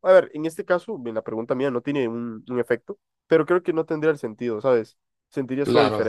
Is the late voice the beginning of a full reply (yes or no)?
yes